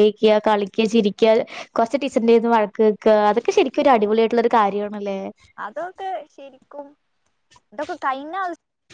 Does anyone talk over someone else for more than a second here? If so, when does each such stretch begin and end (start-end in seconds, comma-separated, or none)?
none